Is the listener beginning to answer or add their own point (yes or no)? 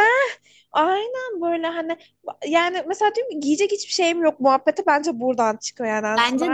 yes